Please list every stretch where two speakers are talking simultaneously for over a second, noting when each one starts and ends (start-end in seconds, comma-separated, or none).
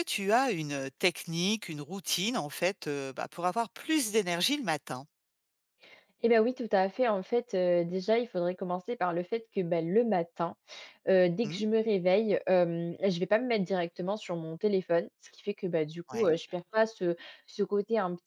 none